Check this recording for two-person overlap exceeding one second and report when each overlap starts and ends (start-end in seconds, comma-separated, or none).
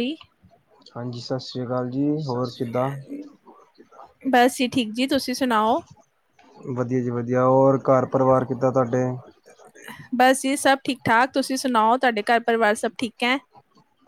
none